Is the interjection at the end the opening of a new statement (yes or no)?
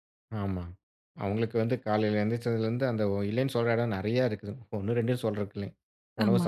no